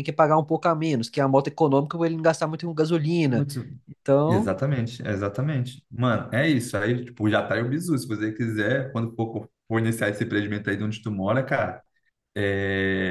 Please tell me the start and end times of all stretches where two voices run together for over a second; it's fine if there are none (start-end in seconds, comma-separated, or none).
none